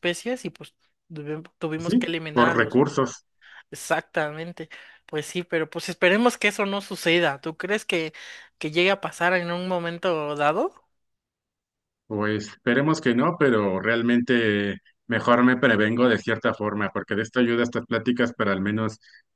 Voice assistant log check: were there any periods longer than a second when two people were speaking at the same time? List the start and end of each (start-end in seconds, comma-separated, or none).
1.8-3.1